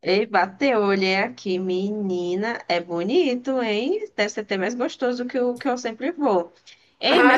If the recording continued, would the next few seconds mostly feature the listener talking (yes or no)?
yes